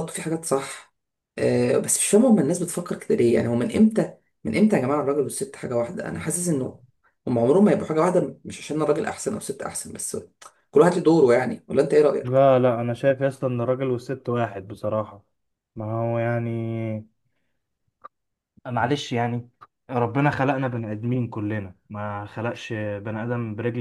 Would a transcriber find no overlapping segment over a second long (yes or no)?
yes